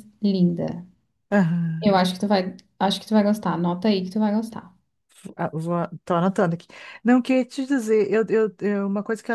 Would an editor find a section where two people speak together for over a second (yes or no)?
no